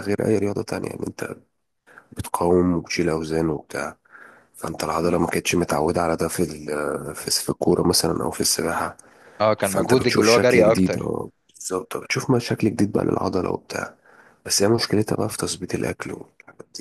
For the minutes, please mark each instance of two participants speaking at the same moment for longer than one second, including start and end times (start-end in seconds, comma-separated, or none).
9.6-11.1